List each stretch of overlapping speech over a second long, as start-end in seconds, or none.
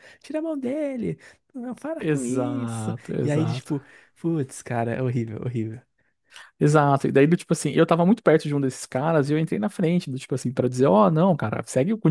2.0-3.7